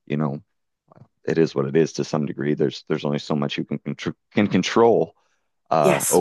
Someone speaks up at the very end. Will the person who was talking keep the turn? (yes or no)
yes